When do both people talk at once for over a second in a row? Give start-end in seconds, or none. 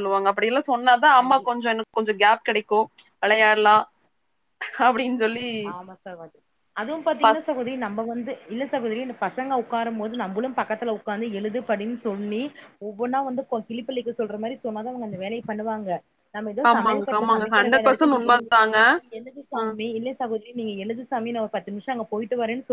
16.7-18.5